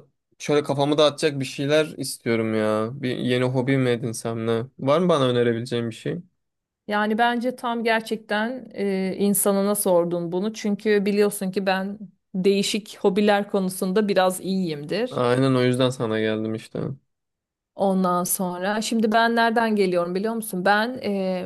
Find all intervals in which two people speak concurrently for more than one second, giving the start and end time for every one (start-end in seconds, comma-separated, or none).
none